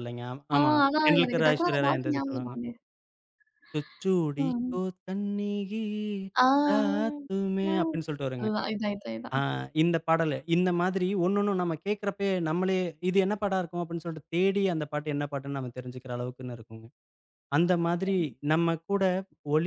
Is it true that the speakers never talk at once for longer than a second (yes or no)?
no